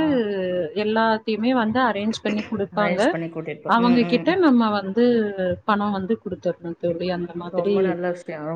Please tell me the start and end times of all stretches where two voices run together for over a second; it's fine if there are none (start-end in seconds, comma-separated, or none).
none